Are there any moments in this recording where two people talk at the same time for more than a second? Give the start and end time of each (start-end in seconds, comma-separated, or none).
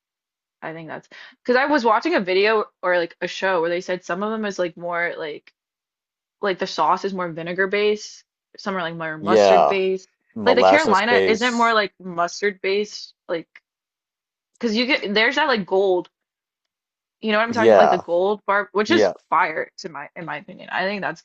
10.4-11.8